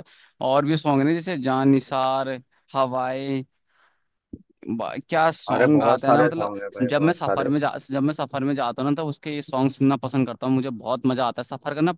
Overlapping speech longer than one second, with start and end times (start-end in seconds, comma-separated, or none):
5.5-7.5